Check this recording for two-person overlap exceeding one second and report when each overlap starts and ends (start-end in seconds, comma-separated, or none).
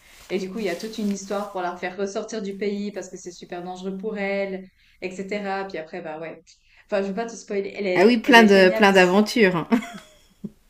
7.9-9.1